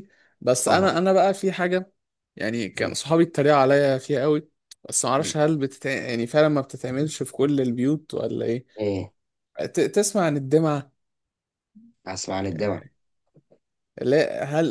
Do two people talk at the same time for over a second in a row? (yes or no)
no